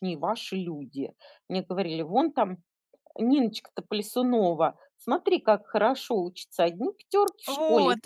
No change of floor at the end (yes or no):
yes